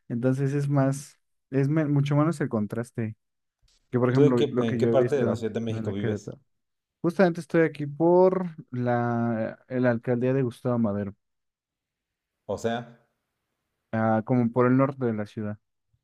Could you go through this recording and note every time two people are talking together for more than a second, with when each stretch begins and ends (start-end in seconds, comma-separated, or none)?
4.1-6.3